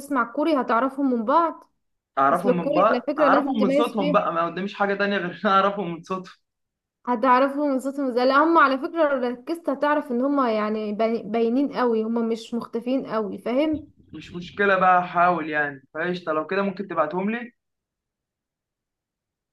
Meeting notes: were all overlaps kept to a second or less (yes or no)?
no